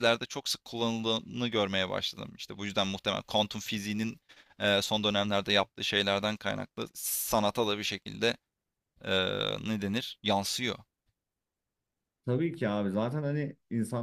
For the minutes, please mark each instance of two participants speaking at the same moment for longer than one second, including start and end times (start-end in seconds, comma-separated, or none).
none